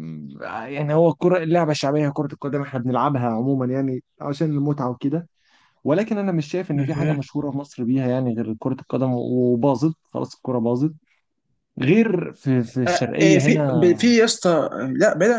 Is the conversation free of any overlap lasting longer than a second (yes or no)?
no